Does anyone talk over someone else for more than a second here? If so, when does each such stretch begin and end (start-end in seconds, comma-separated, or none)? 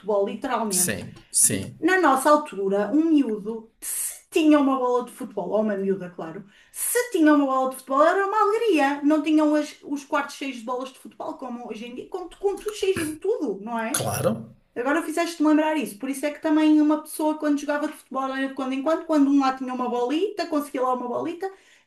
none